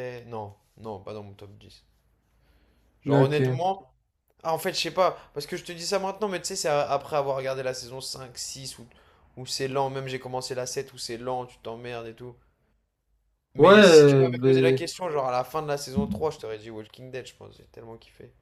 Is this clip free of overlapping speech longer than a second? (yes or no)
no